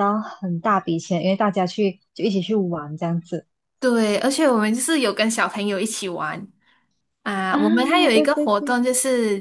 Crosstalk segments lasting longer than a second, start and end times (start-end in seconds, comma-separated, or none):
7.5-8.8